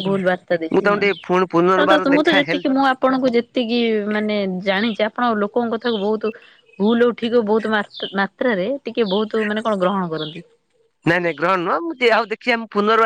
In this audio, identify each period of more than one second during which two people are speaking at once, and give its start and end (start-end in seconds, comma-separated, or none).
0.7-2.6